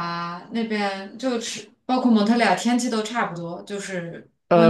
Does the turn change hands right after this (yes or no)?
yes